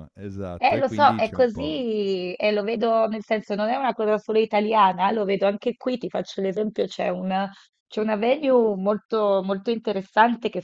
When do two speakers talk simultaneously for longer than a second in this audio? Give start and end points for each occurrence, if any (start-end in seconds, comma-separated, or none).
0.6-1.8